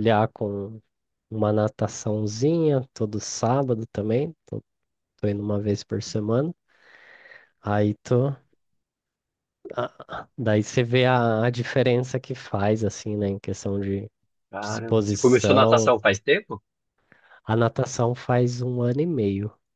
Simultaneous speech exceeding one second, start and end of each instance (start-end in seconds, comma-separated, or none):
14.6-15.9